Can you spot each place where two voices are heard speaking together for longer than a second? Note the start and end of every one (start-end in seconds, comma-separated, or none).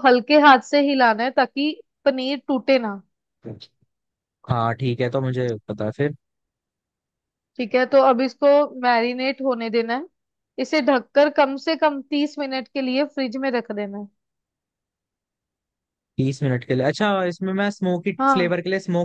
none